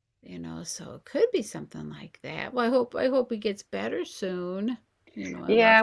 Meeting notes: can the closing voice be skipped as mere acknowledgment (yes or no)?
no